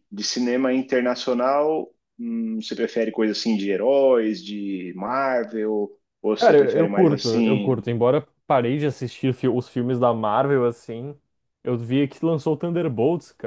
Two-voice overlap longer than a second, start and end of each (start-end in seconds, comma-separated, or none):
6.3-7.8